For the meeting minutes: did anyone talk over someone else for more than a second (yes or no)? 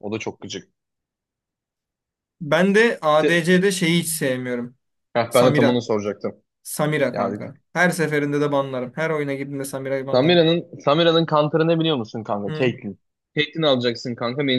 no